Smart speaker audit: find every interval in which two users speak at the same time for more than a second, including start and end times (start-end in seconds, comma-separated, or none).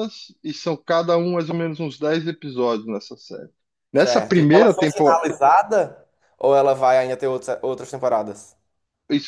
3.9-5.2